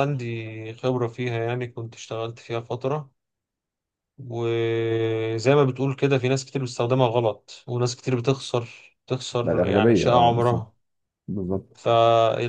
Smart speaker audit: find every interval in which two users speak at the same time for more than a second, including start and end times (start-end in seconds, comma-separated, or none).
9.4-10.7